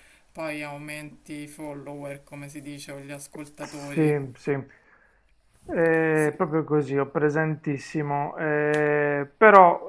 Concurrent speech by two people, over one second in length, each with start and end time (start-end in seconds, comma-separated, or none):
none